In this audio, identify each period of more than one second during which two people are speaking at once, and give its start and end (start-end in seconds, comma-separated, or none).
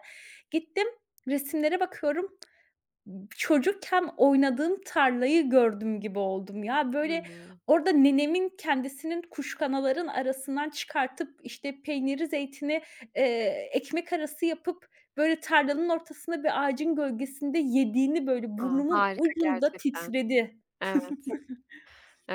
18.6-20.1